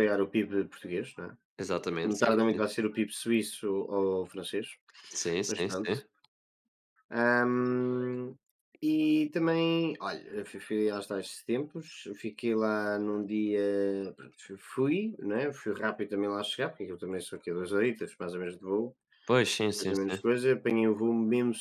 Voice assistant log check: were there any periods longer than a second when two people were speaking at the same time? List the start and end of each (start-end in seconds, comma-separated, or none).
none